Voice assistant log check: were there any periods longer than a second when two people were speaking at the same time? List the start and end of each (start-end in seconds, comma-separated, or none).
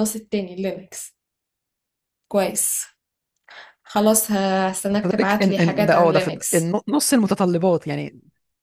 5.0-6.8